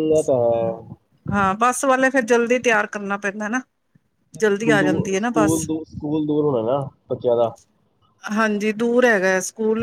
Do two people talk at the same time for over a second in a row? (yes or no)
yes